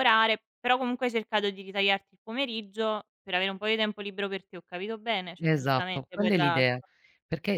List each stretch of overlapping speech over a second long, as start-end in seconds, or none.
5.4-6.7